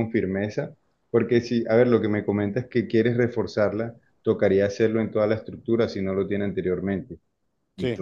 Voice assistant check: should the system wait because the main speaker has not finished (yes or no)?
yes